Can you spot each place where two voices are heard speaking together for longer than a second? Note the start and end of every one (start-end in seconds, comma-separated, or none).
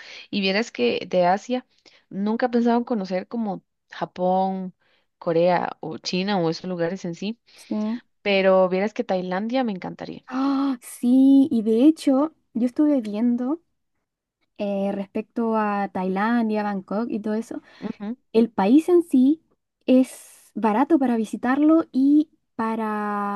none